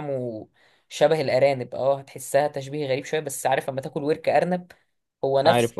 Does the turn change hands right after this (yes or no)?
no